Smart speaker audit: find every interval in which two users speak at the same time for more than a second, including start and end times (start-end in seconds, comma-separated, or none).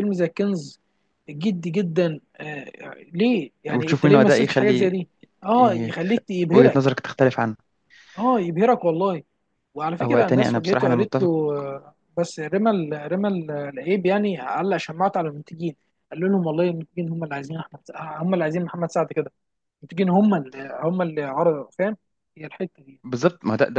3.7-5.0, 10.0-11.3